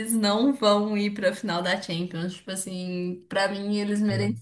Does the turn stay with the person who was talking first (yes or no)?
yes